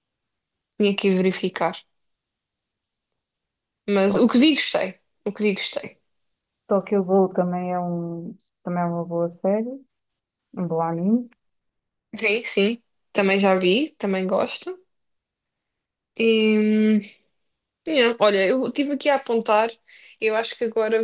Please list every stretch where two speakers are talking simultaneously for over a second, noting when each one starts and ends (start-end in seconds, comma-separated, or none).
none